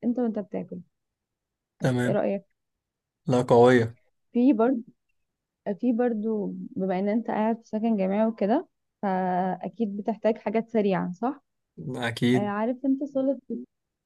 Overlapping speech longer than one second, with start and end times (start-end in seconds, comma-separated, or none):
none